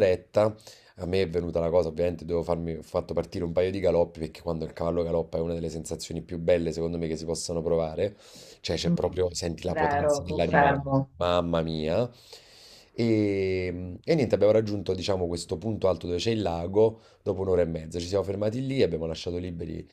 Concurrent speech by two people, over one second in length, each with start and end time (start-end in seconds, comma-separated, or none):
9.7-11.1